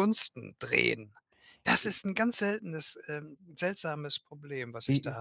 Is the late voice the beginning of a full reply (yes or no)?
yes